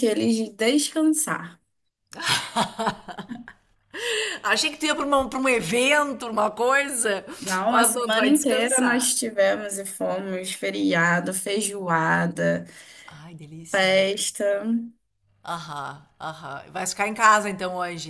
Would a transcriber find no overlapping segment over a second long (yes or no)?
no